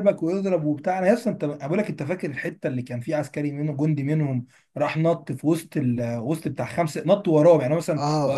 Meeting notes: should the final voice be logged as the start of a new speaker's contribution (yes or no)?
no